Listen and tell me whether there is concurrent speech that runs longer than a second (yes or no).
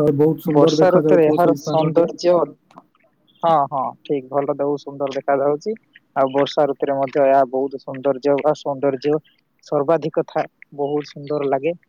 yes